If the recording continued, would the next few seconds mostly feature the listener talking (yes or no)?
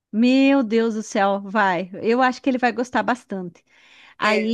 yes